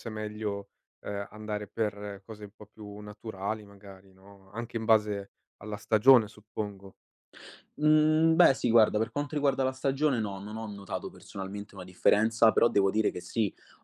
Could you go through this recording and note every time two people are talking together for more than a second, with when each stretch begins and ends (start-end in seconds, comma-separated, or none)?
none